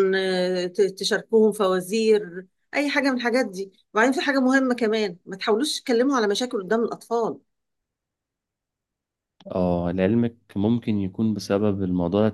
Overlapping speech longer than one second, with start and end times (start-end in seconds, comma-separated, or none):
none